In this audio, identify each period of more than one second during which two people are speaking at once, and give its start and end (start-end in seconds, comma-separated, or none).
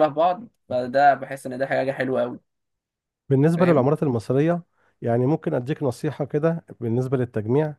none